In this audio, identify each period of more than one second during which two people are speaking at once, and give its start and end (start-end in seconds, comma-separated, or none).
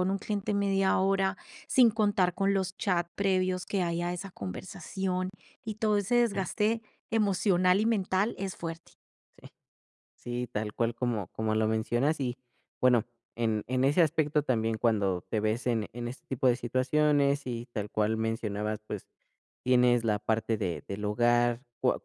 none